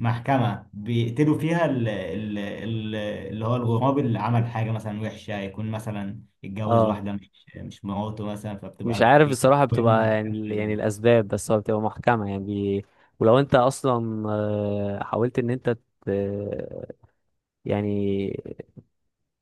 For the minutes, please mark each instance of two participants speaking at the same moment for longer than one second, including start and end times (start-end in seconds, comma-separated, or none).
8.8-10.7